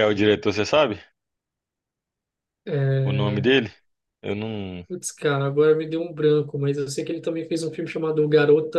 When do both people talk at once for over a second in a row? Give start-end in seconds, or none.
none